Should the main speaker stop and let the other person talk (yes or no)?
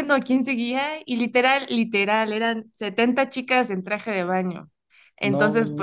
no